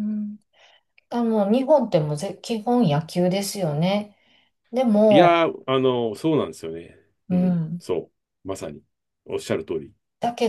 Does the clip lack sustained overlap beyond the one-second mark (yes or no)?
yes